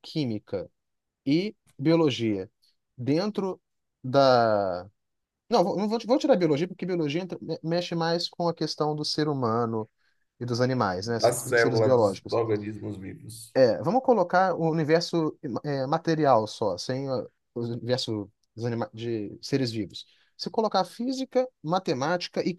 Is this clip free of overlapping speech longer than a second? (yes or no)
no